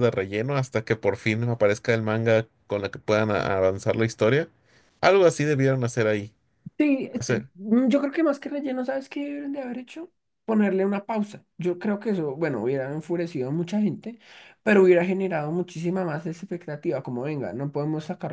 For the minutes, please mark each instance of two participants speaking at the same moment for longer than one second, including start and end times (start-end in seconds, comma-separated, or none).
none